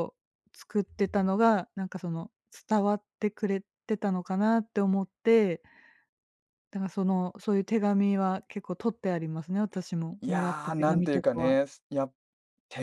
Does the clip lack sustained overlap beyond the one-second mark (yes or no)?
no